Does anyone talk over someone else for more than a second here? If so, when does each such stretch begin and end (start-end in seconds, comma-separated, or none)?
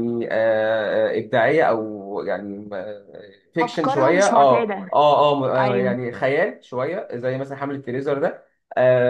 3.6-4.9